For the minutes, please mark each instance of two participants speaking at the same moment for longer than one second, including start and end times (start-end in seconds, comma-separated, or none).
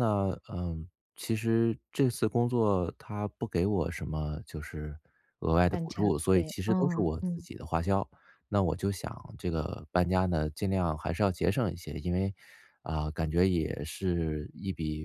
5.7-7.5